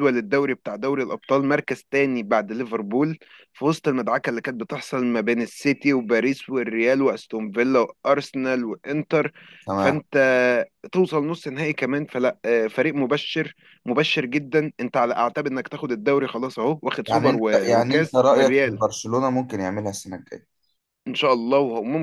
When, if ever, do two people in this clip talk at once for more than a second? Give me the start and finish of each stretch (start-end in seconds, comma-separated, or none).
17.1-18.8